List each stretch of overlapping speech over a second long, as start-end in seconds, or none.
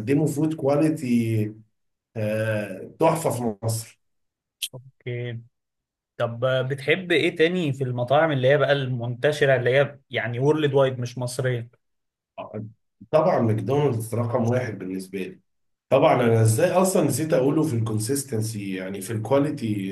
none